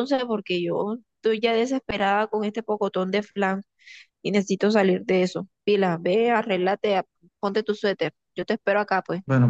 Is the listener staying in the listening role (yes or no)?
no